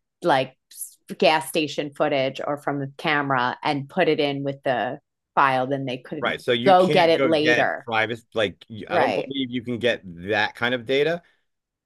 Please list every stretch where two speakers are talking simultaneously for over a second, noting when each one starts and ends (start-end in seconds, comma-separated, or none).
6.2-7.9